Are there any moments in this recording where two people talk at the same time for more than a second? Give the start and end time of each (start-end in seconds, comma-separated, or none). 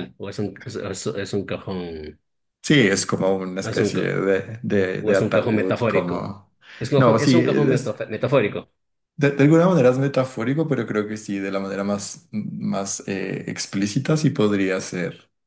5.0-6.3